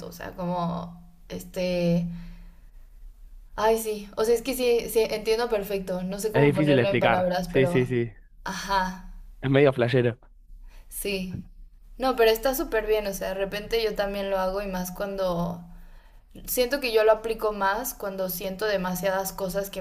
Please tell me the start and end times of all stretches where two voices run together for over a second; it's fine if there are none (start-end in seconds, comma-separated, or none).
6.3-7.9